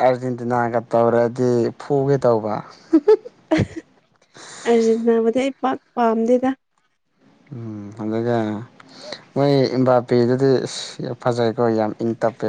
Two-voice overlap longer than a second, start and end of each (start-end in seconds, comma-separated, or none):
none